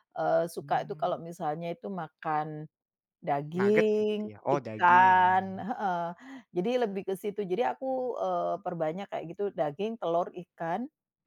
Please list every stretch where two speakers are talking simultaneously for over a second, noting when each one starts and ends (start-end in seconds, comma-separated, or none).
3.6-5.2